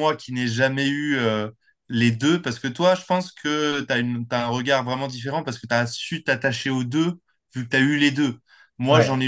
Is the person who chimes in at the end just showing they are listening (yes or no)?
yes